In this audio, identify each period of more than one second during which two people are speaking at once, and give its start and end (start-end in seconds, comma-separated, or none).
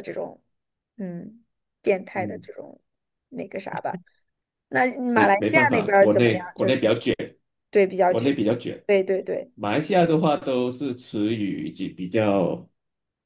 5.1-7.0